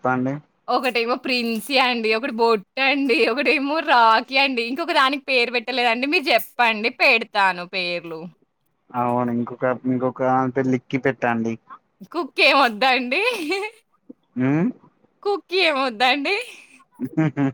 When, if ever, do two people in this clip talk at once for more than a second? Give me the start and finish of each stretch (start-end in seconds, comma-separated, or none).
none